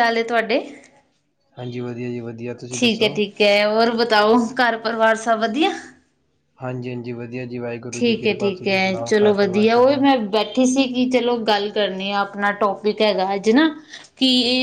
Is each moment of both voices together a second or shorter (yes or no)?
yes